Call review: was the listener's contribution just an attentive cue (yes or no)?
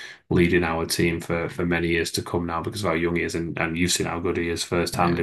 yes